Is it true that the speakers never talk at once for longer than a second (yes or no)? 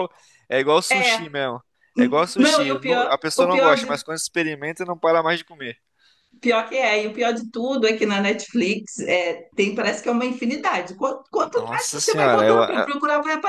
no